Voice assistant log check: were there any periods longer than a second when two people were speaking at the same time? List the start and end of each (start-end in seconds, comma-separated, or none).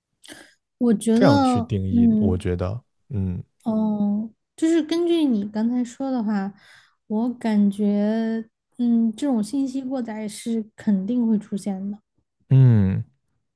1.1-2.5